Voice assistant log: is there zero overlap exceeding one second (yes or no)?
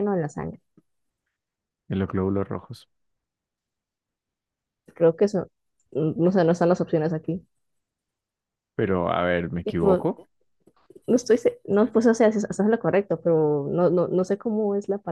yes